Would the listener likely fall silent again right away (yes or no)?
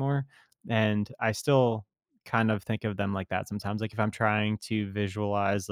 yes